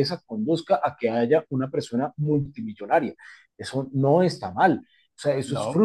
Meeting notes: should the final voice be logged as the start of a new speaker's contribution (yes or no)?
no